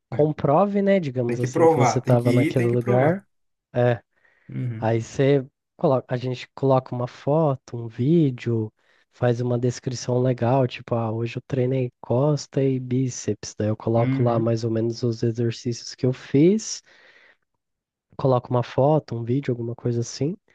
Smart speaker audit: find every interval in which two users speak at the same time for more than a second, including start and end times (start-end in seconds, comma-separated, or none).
1.2-3.2